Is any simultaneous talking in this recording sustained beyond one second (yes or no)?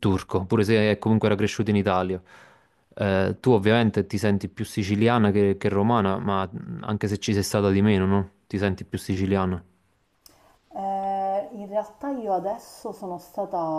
no